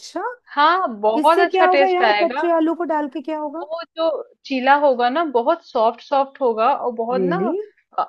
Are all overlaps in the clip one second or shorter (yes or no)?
no